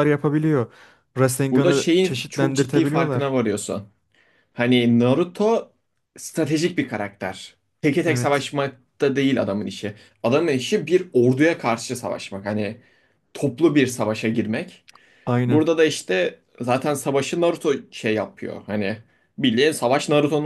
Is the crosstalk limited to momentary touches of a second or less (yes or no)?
no